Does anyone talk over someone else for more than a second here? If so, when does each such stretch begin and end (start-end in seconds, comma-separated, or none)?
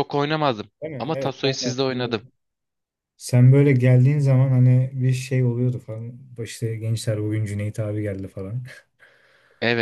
0.8-2.2